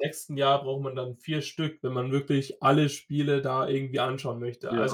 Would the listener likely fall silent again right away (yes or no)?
yes